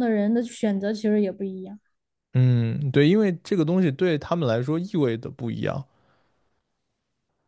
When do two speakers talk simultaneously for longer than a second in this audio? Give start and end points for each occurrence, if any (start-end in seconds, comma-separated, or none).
none